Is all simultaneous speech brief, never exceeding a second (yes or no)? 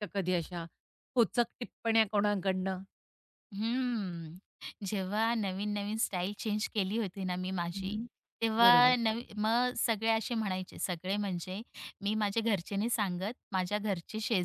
yes